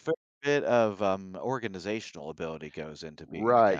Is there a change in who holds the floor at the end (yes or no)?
yes